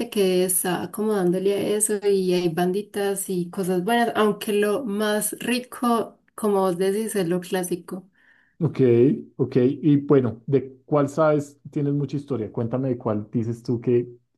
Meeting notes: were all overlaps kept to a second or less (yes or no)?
yes